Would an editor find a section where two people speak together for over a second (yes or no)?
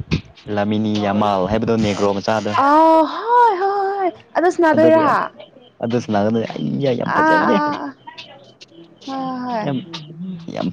no